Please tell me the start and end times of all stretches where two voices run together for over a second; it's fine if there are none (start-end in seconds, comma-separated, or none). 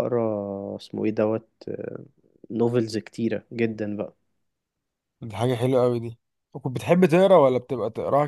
none